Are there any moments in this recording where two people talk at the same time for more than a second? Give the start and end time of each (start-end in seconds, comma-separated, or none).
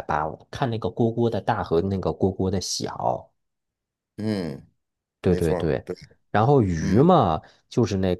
none